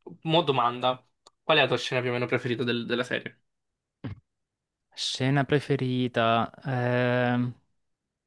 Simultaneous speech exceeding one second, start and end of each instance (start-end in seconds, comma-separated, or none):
none